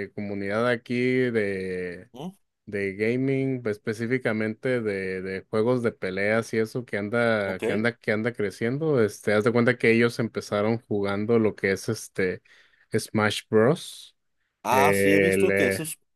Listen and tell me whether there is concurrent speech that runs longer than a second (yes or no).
no